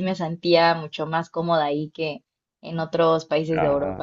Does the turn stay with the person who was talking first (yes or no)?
no